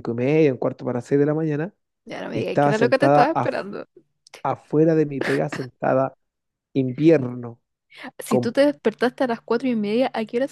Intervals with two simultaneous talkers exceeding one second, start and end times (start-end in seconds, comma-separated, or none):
2.3-3.6